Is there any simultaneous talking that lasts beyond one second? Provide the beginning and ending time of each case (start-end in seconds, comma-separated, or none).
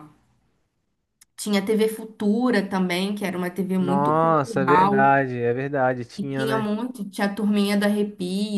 3.8-5.2